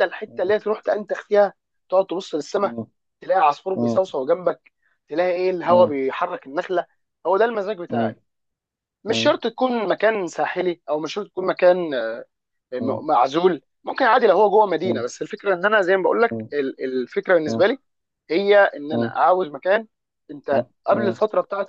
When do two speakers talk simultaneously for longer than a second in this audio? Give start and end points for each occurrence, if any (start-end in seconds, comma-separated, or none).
none